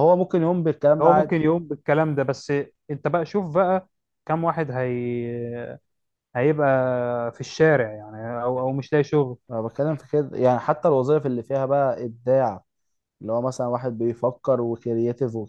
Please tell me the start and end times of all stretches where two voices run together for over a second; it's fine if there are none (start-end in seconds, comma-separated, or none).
none